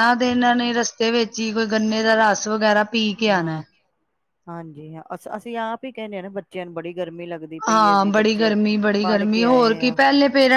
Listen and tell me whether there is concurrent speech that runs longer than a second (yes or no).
no